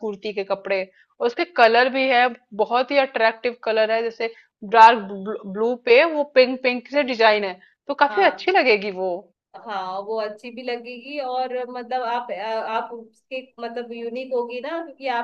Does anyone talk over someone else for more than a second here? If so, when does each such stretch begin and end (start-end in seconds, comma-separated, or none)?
none